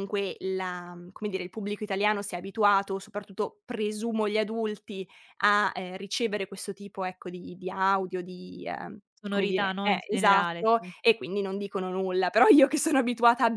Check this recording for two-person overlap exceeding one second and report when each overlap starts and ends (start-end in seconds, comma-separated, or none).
9.2-10.9